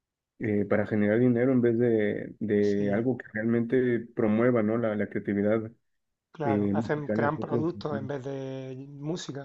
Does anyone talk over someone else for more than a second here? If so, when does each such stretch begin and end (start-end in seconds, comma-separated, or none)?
6.4-8.1